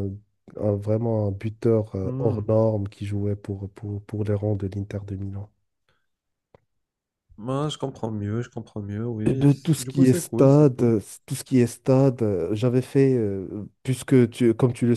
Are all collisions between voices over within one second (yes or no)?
no